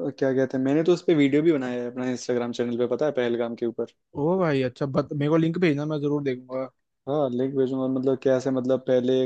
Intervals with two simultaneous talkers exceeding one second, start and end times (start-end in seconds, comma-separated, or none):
none